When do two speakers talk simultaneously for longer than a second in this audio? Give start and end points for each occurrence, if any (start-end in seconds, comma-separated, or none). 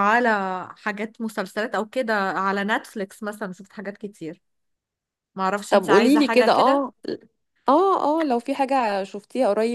5.7-6.9